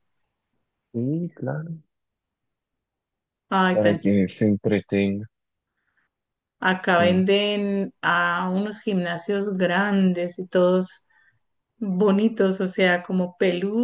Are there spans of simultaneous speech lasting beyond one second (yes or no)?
no